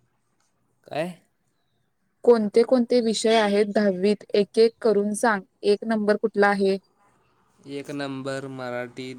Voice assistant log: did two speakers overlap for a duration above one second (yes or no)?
no